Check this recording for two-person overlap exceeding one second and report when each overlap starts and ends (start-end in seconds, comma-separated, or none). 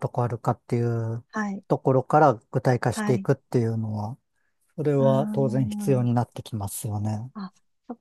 5.0-6.2